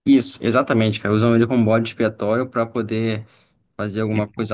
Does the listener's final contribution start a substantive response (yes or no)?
no